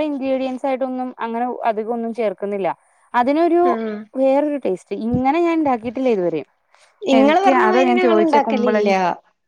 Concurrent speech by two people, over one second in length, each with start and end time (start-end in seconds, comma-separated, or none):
7.2-8.9